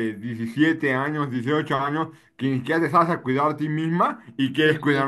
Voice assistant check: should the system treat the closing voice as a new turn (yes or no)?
no